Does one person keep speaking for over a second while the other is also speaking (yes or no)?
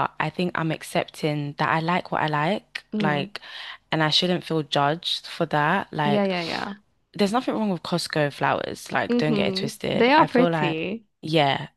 yes